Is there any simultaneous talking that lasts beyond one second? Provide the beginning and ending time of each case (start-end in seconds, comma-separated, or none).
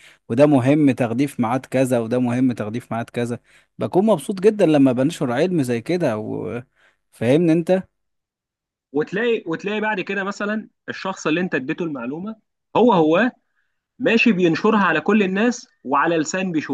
none